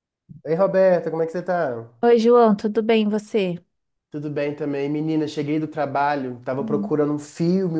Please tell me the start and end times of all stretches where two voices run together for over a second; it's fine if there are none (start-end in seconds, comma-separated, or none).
none